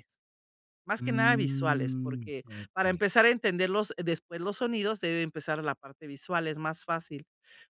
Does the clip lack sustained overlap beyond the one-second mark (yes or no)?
no